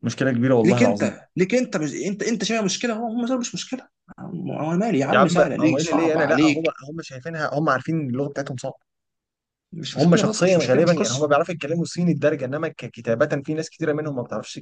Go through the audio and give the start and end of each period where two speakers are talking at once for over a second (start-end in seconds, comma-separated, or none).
5.1-6.8, 9.9-11.3